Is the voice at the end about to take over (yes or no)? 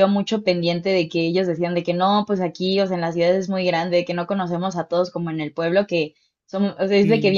no